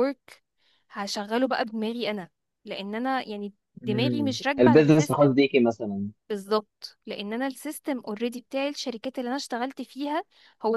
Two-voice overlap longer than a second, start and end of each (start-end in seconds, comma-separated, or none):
3.8-5.3